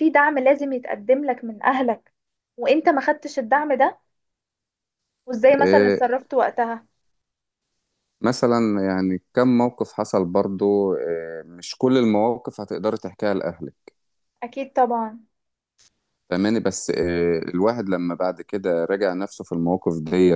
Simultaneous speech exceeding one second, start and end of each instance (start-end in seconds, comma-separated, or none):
none